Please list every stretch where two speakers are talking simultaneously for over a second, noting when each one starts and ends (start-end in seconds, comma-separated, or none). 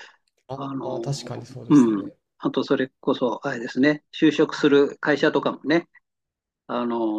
0.5-2.2